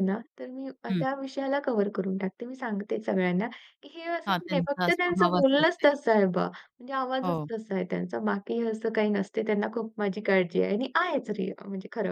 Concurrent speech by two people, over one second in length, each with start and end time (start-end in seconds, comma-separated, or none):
4.3-5.8